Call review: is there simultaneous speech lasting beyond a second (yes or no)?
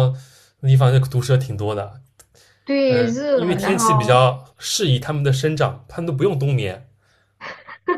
yes